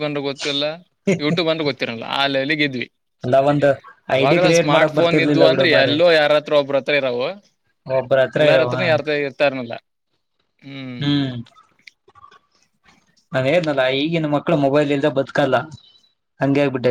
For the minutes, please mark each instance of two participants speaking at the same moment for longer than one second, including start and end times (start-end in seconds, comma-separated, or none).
4.2-6.0